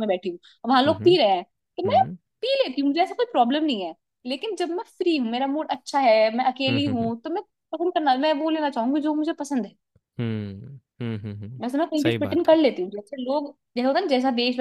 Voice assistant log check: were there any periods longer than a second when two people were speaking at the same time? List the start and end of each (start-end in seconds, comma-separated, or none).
none